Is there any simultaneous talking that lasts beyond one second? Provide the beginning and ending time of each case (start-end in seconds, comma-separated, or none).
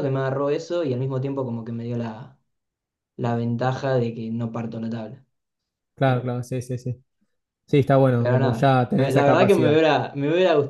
8.2-9.8